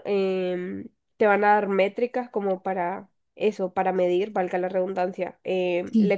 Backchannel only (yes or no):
yes